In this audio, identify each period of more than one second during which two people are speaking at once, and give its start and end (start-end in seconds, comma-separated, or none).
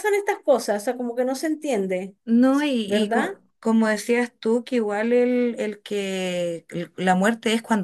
none